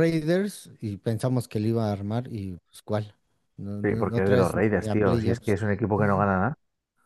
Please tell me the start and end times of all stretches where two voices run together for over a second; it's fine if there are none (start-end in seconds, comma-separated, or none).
3.8-5.6